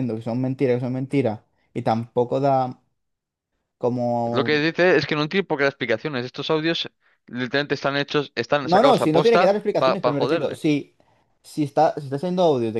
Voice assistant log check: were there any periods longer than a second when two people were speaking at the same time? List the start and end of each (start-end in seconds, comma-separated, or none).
8.6-10.6